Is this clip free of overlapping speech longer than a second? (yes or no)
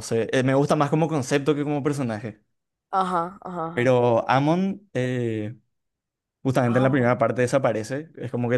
yes